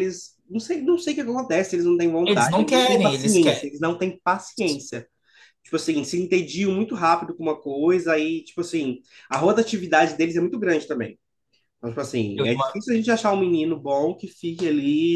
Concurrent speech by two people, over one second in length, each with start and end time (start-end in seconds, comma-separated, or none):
2.3-3.7